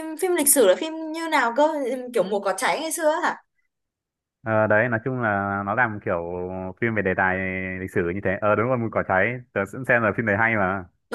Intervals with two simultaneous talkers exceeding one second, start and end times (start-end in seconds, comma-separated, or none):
none